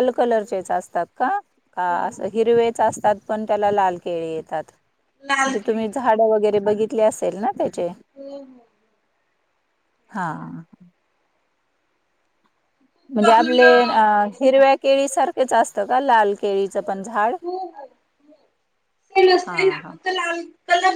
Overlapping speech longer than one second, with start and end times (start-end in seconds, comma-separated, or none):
none